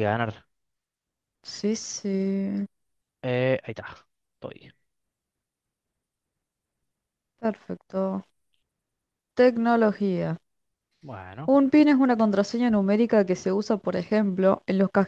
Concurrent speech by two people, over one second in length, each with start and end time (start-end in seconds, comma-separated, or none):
none